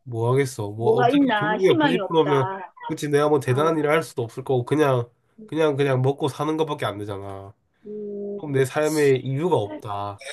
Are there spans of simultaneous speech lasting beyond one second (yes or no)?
yes